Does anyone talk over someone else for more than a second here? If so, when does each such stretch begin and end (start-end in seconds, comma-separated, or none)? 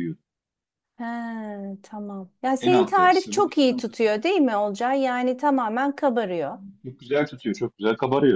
2.6-3.9